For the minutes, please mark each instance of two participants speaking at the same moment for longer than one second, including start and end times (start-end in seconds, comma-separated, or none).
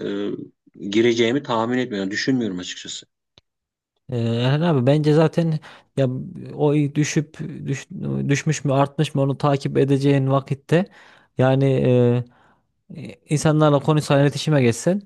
none